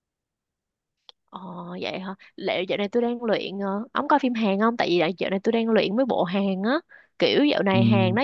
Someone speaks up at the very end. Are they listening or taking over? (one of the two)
listening